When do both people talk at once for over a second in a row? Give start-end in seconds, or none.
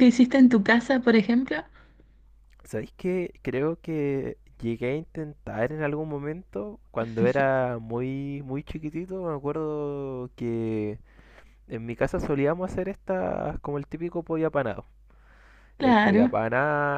none